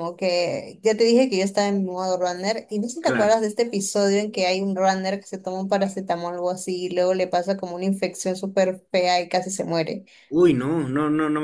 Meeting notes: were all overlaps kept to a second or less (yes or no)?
yes